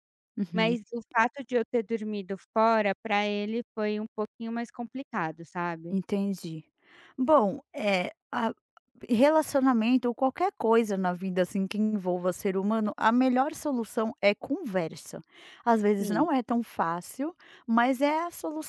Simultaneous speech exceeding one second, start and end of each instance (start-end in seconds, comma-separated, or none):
none